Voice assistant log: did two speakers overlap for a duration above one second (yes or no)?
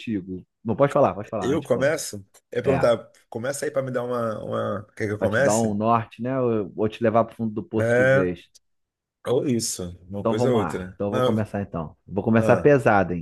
yes